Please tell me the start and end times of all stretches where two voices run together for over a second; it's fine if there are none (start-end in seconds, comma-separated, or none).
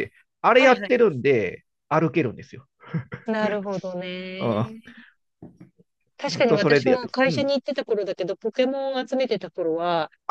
6.2-7.5